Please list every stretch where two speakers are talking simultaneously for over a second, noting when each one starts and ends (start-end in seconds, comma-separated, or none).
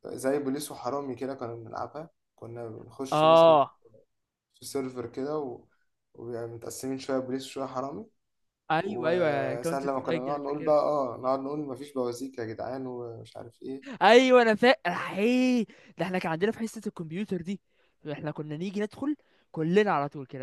8.8-10.8